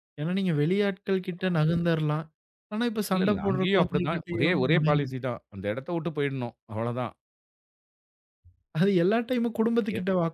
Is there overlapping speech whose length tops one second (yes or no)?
yes